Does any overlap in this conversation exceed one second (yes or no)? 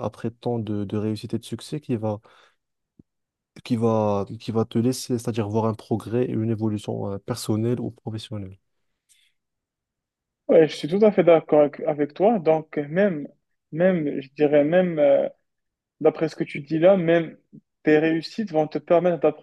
no